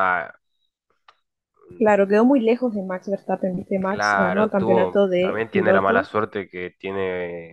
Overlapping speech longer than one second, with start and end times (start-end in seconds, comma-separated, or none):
3.9-6.2